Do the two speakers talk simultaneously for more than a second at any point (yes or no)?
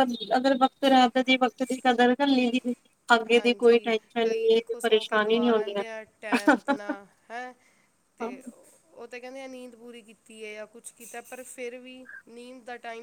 yes